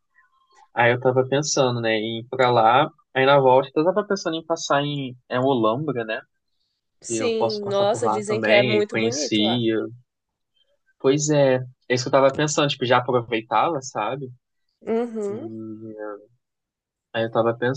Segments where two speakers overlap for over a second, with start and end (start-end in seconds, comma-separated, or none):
7.1-9.6